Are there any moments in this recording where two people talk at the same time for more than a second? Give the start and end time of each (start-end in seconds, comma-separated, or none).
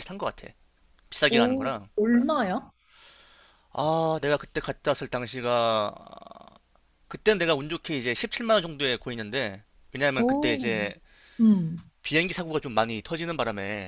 none